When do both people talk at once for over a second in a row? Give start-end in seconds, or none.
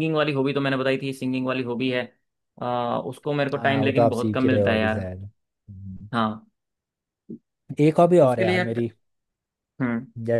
3.5-5.1